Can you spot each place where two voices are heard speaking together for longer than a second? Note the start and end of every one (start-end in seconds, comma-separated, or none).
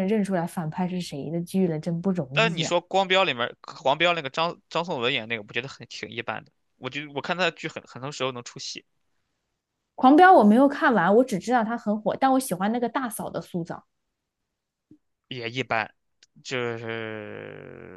none